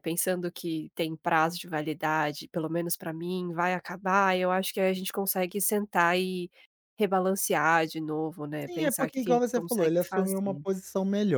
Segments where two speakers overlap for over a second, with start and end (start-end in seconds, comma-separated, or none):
8.7-10.6